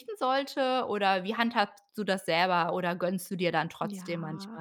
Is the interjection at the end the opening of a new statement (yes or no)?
yes